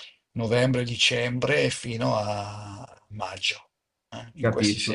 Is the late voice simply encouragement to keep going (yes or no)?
no